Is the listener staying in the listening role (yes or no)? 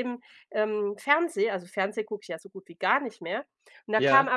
yes